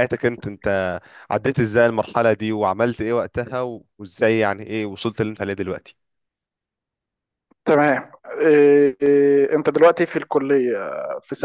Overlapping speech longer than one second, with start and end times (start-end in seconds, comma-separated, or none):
none